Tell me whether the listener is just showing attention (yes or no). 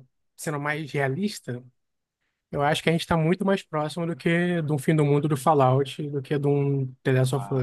no